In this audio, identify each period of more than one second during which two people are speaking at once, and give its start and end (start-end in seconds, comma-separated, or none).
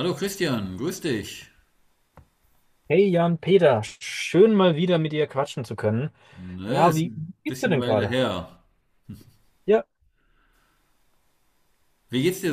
6.7-8.2